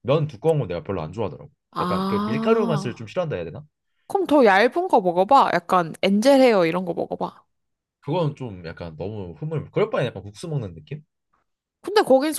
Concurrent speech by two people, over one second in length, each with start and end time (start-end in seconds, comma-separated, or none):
1.7-3.1